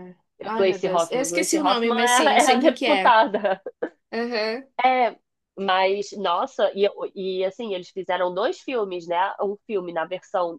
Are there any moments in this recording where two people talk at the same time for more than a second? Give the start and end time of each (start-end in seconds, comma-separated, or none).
0.6-3.2